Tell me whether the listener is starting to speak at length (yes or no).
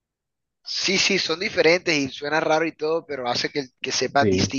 yes